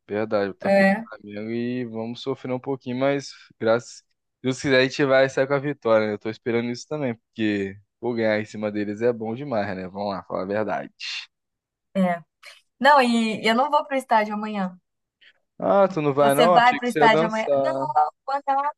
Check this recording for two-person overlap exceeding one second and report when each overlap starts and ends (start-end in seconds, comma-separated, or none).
16.2-17.9